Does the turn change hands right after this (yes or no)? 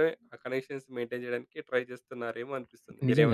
yes